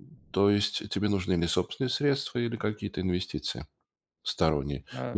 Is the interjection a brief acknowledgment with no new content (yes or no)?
yes